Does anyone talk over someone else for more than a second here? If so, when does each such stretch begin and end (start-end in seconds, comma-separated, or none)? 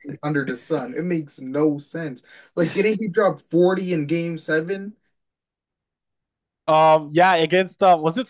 none